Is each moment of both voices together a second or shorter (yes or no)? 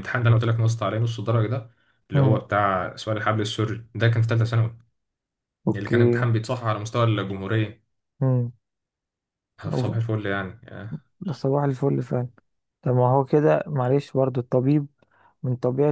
yes